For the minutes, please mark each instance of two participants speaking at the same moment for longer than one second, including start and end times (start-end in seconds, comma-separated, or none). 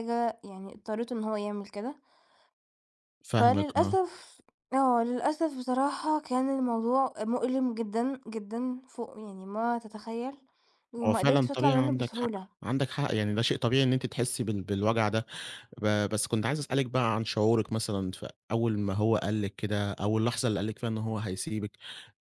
11.1-12.5